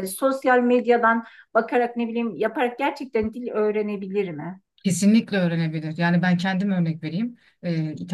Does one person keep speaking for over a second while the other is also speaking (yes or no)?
no